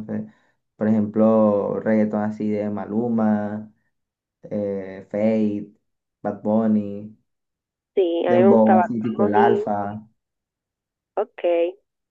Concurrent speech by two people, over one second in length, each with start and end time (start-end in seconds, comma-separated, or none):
8.3-9.7